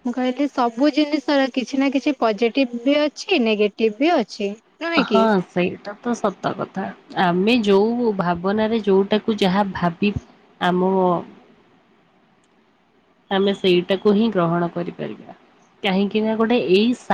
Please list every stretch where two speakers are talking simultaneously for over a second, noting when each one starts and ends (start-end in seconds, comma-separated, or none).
none